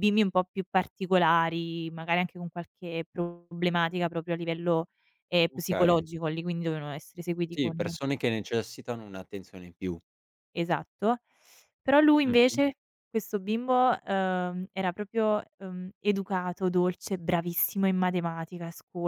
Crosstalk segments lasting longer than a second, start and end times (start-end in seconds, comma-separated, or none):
none